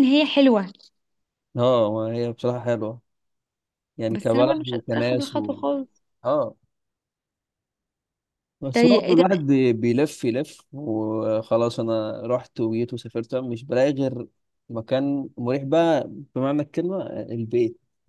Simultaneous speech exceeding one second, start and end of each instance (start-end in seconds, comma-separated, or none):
4.1-5.6